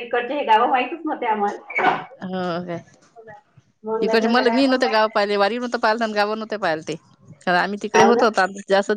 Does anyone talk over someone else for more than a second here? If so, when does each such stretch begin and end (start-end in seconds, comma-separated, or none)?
4.1-5.5